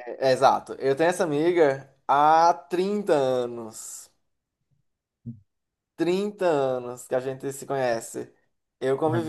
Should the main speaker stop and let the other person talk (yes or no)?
no